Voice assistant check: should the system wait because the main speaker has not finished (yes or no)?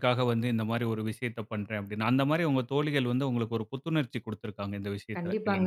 no